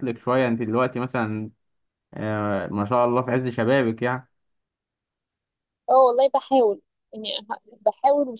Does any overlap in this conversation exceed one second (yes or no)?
no